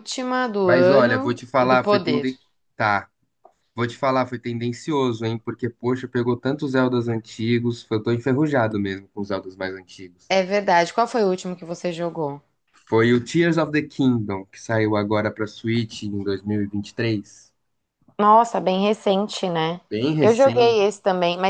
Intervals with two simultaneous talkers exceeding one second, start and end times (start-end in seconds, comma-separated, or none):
0.6-2.3